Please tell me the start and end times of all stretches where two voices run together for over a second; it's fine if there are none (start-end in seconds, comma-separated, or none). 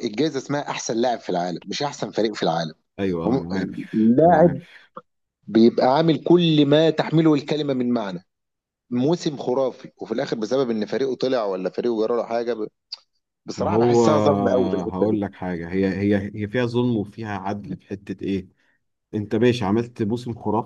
13.6-15.2